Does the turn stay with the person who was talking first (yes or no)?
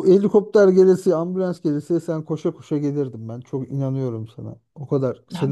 no